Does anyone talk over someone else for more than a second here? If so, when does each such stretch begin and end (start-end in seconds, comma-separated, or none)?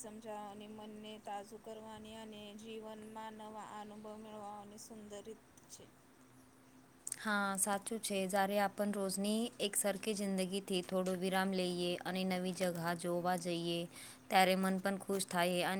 none